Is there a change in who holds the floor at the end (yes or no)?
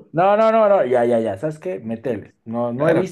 yes